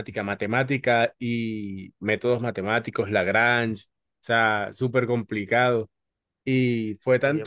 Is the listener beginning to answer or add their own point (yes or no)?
no